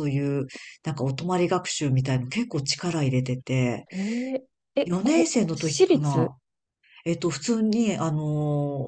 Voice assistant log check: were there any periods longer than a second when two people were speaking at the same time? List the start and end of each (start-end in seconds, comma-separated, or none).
4.8-6.3